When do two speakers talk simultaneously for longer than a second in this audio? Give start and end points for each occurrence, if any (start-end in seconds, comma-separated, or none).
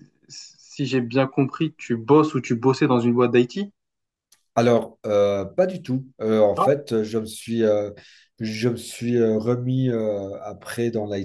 none